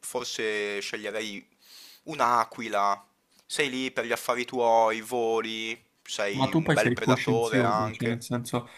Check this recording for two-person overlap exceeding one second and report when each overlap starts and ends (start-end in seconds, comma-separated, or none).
6.3-8.2